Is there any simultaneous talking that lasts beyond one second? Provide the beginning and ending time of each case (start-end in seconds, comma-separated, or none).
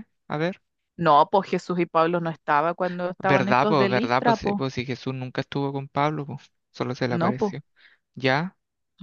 3.2-4.6